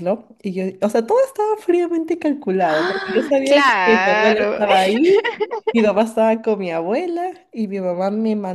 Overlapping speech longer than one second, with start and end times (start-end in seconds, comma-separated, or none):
2.6-4.6